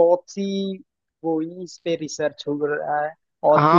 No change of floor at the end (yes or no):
no